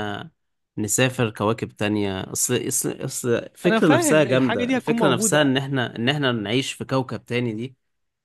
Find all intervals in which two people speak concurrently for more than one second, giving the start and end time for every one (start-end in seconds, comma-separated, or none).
3.6-5.5